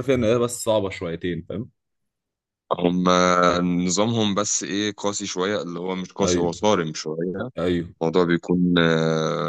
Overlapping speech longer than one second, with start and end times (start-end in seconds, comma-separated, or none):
none